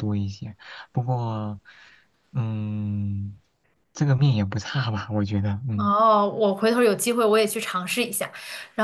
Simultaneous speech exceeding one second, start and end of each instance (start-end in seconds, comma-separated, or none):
none